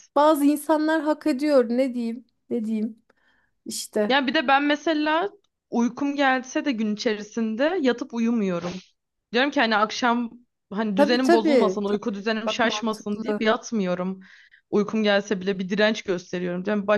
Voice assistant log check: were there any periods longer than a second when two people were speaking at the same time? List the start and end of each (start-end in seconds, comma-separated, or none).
11.0-13.4